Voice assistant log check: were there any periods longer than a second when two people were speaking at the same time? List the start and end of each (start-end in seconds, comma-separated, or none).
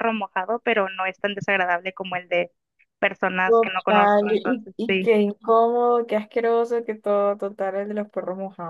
3.5-5.1